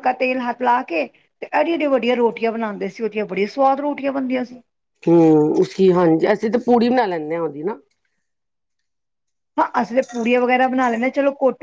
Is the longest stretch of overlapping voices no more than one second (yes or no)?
yes